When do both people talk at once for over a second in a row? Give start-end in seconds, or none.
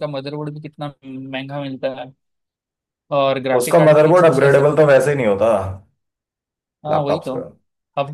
3.6-4.9